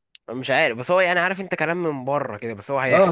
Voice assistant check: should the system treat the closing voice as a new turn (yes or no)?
yes